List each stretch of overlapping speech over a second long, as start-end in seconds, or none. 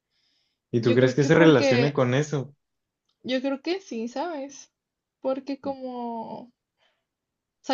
0.8-2.0